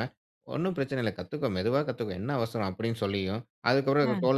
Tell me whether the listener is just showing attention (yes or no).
yes